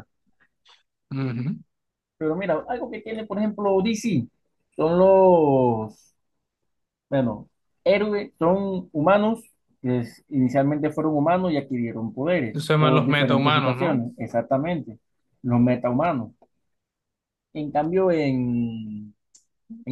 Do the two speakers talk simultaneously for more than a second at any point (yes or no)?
yes